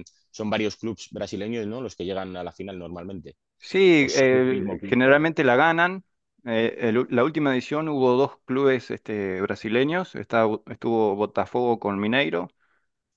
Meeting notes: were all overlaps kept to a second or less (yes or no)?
no